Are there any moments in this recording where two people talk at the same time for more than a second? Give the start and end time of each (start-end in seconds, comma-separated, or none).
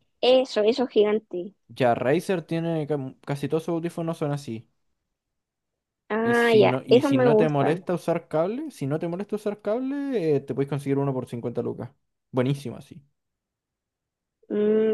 6.2-7.9